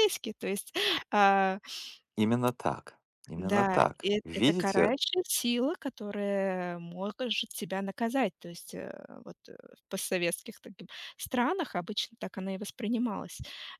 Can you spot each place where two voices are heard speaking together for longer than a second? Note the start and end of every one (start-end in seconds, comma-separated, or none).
3.4-4.9